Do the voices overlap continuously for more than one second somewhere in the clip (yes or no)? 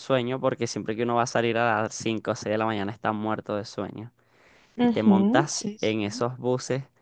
yes